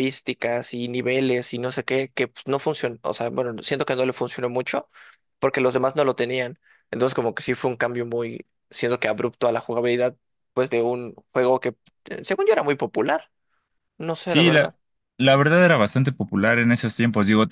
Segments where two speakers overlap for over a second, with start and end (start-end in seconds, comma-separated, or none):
none